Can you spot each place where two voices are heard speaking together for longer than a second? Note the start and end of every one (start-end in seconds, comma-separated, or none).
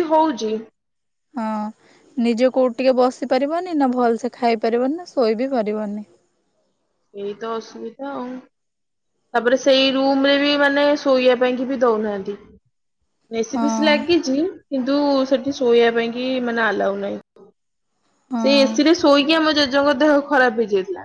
none